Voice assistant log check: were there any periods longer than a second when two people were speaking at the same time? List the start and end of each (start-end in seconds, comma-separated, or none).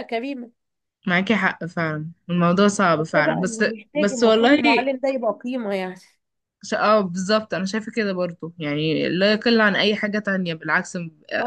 2.9-4.6